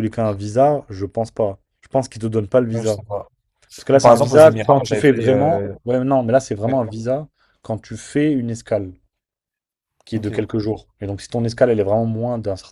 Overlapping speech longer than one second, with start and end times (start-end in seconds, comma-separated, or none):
3.9-5.7